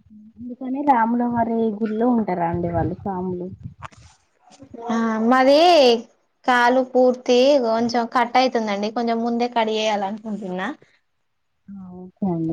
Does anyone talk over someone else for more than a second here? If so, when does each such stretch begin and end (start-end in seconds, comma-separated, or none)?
none